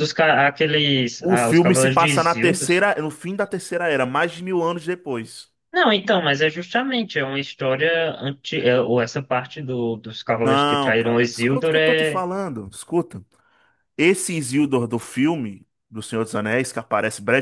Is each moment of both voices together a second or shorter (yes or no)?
no